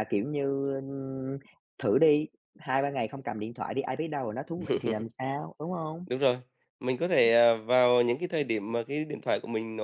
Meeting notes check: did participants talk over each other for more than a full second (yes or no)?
no